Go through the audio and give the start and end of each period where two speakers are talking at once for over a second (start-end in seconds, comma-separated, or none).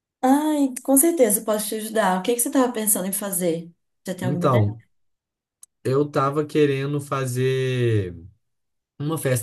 none